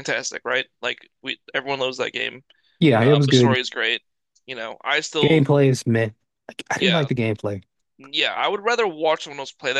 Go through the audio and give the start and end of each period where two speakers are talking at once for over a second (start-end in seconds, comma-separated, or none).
none